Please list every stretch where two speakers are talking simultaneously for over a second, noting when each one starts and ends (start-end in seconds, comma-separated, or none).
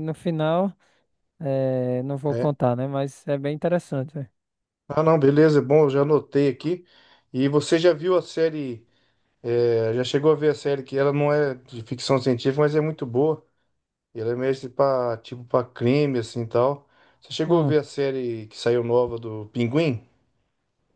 none